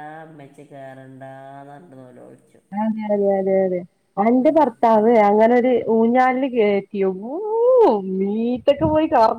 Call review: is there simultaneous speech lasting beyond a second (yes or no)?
no